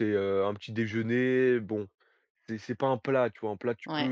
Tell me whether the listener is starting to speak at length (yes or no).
no